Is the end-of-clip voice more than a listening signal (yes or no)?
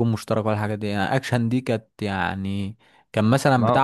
no